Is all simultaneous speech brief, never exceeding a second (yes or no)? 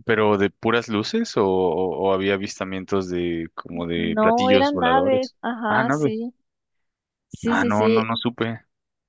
no